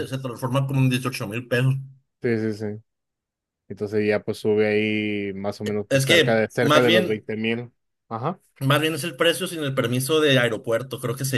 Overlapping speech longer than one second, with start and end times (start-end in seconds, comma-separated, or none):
5.9-7.2